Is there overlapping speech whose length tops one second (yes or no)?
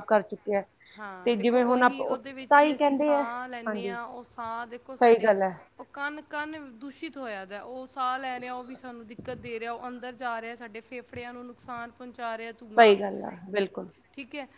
yes